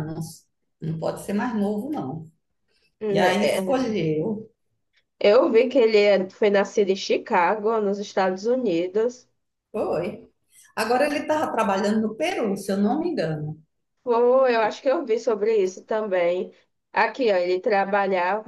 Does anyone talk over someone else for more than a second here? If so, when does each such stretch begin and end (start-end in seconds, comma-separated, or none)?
none